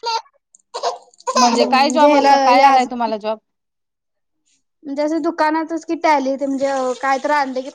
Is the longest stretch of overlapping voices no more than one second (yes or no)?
no